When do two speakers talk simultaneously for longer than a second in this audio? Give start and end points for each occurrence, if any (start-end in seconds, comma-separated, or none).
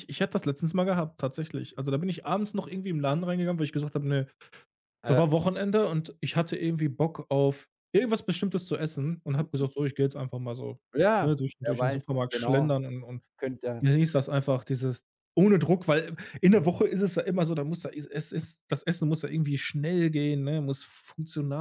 11.2-12.8